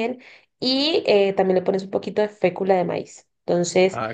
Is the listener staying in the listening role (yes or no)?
yes